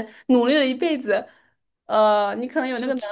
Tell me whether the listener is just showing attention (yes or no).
yes